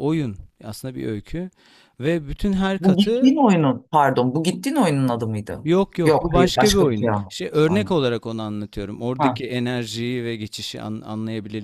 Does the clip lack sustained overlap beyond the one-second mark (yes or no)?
no